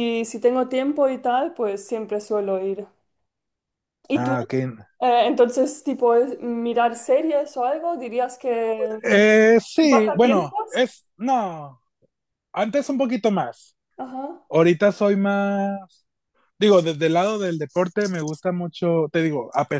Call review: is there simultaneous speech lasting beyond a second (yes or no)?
yes